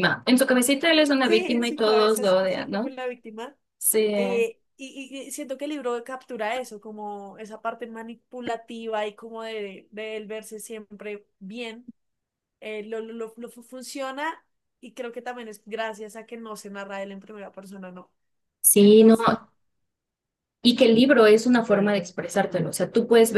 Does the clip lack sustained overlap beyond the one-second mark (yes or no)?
no